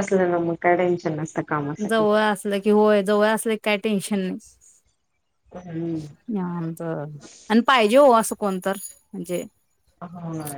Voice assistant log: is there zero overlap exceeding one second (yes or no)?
yes